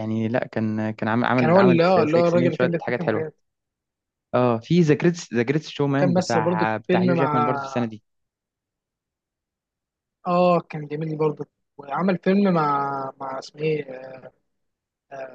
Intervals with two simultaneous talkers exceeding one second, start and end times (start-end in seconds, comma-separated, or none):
1.4-3.3, 5.9-7.5